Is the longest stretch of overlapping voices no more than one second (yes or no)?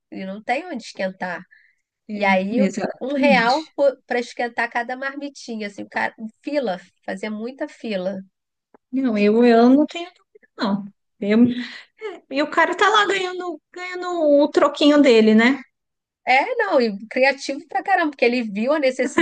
no